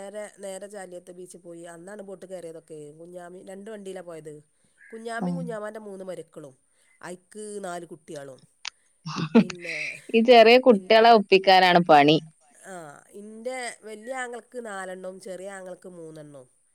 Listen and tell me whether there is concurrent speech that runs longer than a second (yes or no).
no